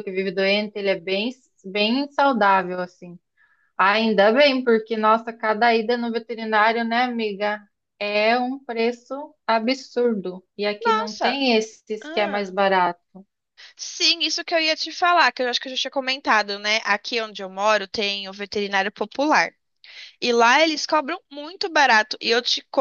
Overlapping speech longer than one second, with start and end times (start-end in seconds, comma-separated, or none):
none